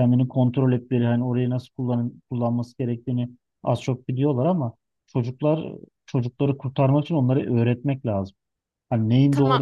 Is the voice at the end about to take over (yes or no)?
no